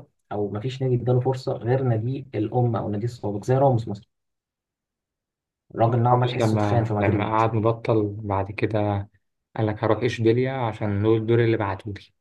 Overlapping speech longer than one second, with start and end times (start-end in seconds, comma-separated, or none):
6.1-7.4